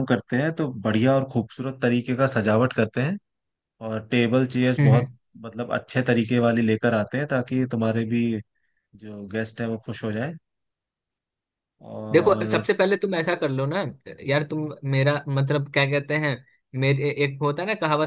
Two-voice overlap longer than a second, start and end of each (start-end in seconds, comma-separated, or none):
none